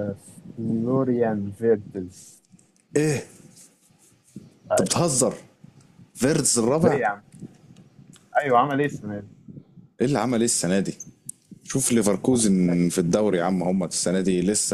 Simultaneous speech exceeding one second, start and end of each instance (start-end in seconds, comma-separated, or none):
none